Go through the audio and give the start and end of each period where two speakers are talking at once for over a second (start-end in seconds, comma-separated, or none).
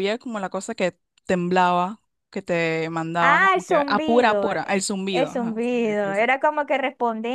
3.2-6.3